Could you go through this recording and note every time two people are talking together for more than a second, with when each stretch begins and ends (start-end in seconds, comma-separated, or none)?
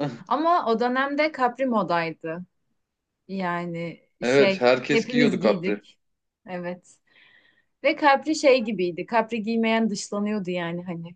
4.2-5.8